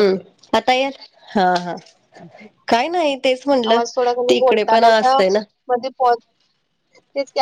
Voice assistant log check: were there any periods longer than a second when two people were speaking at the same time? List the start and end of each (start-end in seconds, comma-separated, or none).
3.7-5.2